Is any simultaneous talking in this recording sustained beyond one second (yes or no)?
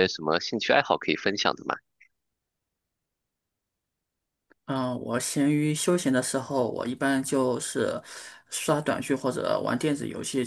no